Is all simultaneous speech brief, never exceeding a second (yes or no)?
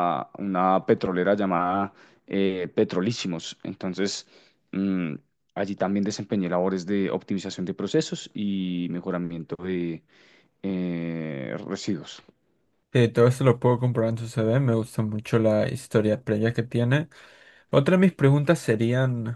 yes